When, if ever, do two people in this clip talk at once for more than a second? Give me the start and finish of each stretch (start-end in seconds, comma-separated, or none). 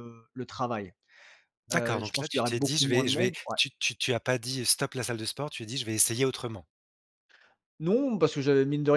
1.7-3.6